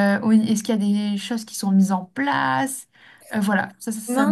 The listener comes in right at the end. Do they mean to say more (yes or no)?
yes